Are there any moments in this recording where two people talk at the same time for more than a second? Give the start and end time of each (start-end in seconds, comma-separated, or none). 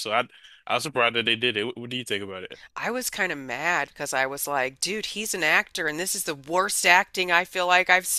none